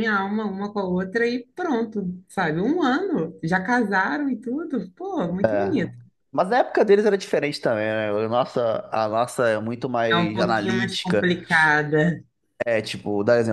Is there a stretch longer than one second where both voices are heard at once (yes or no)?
yes